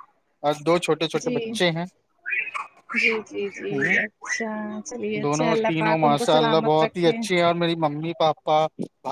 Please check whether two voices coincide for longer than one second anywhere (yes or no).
yes